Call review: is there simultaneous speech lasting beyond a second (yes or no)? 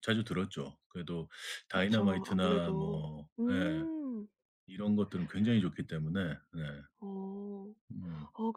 yes